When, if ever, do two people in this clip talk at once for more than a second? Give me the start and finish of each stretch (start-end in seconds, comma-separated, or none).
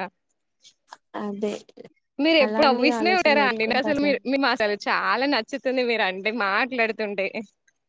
2.5-4.1